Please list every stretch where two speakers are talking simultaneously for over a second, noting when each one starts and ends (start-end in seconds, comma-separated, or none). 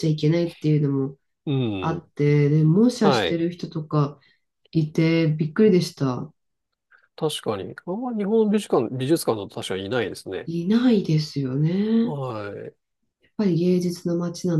none